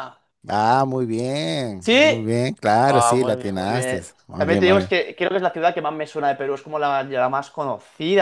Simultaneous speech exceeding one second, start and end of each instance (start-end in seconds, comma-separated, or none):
2.9-4.9